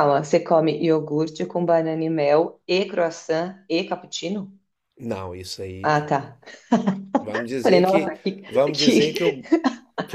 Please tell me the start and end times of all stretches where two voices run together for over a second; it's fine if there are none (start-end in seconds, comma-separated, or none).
7.6-9.4